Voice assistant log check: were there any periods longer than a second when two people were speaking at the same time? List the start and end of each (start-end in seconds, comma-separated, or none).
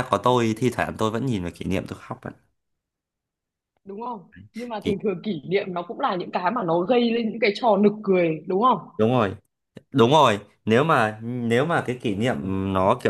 none